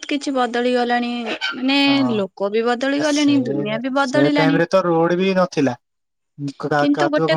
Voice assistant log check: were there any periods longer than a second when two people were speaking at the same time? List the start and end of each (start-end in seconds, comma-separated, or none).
none